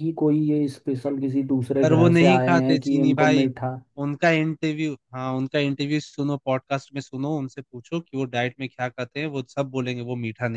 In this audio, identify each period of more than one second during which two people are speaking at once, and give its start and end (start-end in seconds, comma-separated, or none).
1.8-3.5